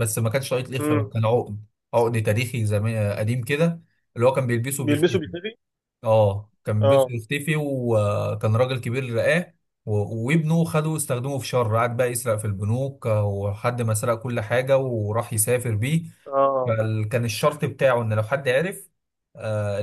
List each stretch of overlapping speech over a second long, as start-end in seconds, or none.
none